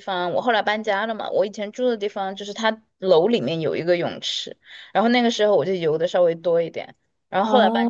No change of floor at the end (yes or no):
yes